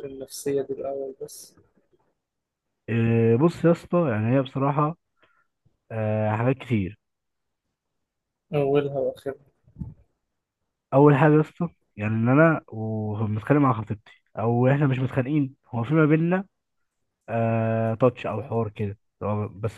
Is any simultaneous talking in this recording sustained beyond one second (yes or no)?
no